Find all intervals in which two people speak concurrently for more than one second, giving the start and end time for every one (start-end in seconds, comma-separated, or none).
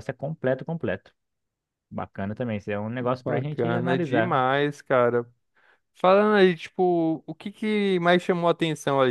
3.0-4.4